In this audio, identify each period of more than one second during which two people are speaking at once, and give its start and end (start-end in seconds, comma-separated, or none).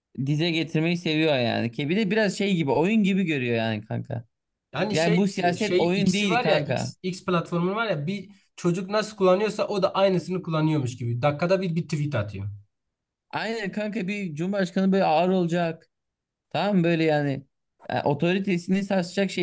4.9-6.9